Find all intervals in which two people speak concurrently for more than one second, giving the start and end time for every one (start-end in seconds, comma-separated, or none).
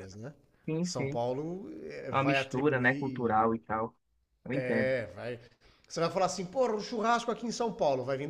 2.1-3.5